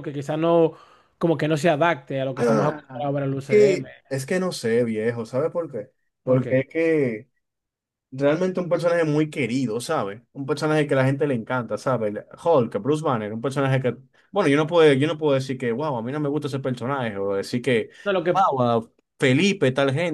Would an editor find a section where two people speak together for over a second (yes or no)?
yes